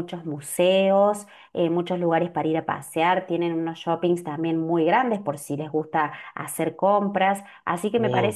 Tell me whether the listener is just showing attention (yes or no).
yes